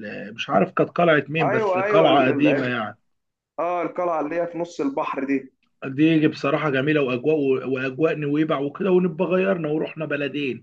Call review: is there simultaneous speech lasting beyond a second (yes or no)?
yes